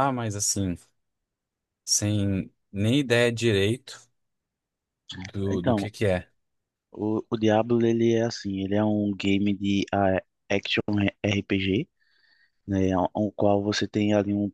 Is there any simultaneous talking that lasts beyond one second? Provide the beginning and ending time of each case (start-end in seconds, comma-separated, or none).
none